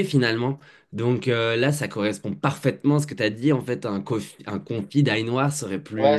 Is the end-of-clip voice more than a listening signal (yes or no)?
yes